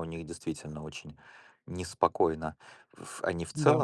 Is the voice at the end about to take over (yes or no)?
no